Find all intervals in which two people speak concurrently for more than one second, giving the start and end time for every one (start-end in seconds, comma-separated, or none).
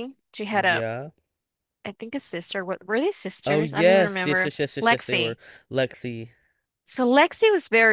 3.5-5.4